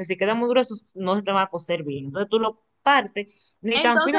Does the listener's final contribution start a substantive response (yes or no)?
yes